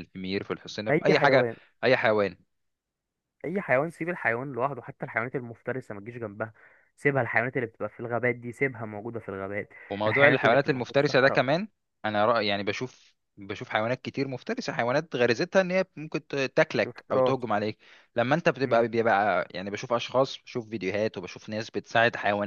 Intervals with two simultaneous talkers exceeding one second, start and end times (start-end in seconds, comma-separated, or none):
9.9-11.4